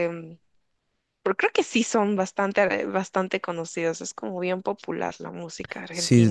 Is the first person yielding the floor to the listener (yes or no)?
yes